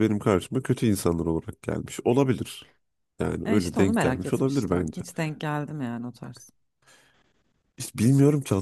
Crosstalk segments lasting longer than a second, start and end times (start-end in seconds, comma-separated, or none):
3.5-5.0